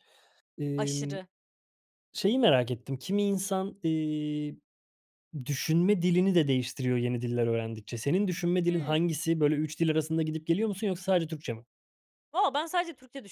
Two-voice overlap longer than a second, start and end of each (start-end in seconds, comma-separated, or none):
none